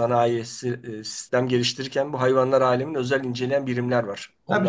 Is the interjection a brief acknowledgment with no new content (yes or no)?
no